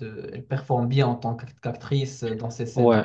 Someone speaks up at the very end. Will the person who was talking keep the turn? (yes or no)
no